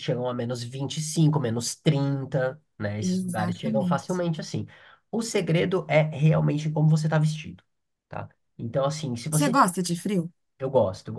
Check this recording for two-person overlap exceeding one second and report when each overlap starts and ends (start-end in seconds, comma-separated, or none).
3.0-4.2